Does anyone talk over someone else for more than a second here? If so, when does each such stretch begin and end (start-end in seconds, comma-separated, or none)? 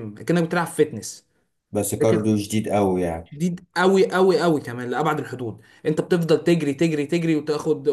none